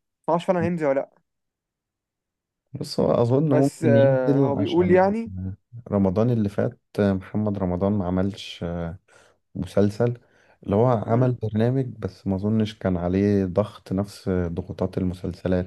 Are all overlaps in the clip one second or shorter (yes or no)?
no